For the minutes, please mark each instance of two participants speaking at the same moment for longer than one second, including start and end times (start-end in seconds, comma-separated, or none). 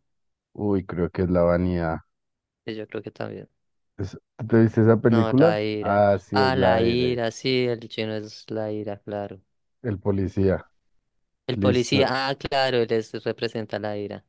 5.1-7.2